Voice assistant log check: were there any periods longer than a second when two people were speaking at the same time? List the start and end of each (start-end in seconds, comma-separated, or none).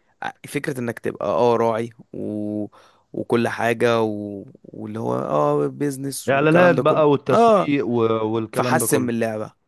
6.3-7.7